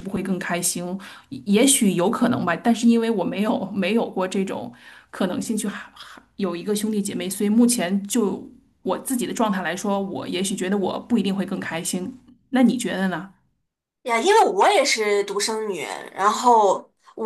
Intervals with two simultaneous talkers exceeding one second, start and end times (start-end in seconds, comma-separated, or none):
none